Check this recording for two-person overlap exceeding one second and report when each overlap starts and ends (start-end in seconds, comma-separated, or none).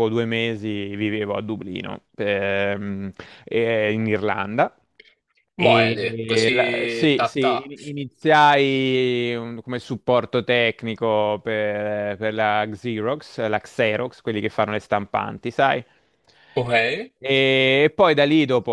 5.6-7.5